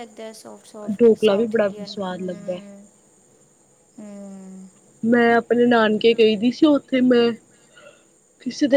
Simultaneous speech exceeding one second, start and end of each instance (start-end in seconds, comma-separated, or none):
1.0-2.6